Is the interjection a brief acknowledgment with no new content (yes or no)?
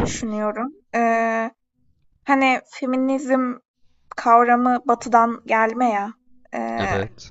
yes